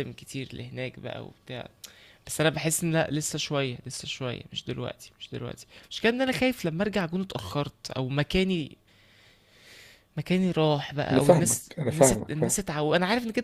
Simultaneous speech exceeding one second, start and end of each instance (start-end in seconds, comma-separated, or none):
11.1-12.6